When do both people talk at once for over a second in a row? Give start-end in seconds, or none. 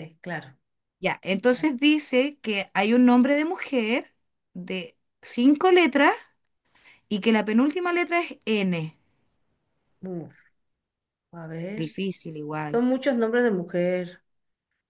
none